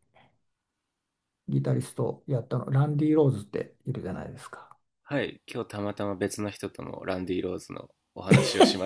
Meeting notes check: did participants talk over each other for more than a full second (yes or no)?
no